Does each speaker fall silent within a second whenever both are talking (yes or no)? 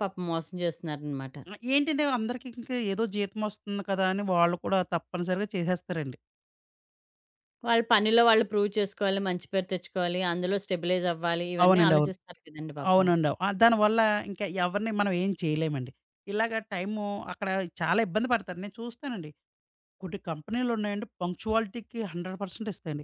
yes